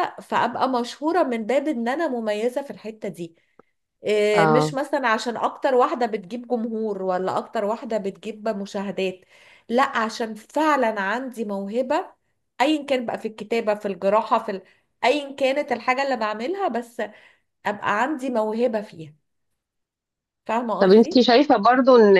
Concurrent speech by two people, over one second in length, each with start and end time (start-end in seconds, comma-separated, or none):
none